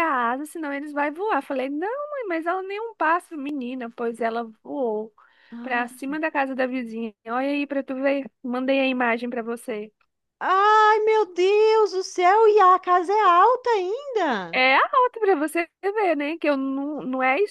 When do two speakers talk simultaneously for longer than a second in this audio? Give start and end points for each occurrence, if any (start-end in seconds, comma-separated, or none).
none